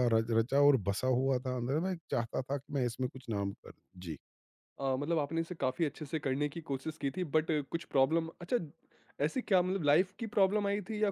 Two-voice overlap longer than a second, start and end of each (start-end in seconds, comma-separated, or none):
none